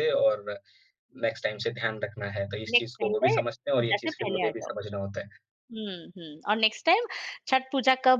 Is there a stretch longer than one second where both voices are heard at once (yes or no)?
yes